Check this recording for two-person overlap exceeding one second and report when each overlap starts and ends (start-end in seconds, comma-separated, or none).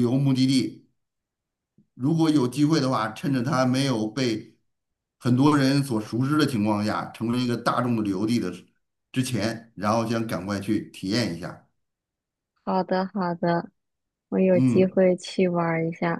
none